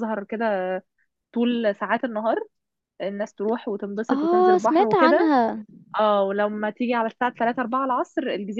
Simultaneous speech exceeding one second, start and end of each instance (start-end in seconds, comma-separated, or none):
4.1-5.3